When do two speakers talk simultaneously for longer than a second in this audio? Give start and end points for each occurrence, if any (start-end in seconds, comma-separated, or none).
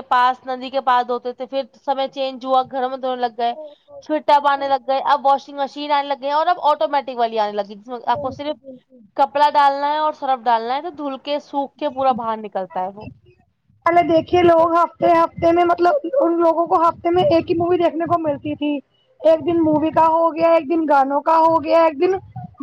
none